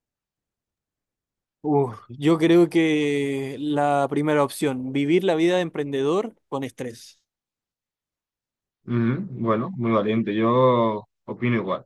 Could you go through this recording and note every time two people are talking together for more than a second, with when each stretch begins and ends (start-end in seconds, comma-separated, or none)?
none